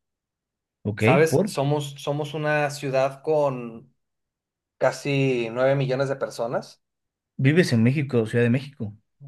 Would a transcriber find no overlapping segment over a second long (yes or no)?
yes